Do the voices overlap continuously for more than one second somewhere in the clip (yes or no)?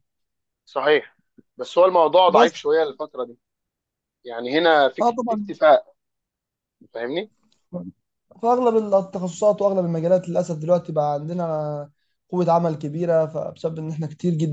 no